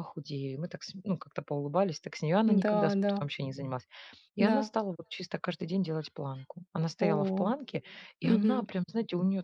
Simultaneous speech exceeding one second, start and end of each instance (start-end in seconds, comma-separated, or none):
none